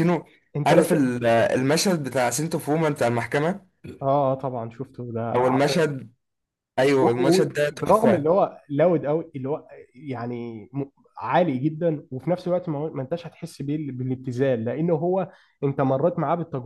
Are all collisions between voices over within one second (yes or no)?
no